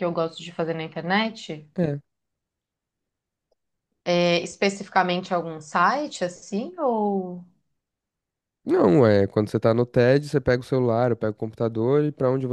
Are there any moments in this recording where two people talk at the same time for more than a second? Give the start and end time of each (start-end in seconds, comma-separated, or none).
none